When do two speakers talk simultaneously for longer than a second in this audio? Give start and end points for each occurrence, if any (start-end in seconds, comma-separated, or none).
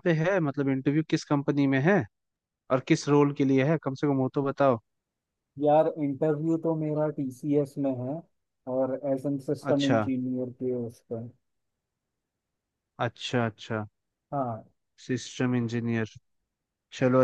none